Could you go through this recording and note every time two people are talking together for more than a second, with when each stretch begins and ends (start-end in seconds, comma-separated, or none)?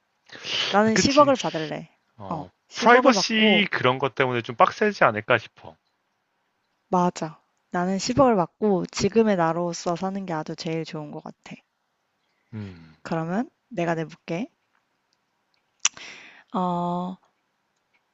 2.3-3.7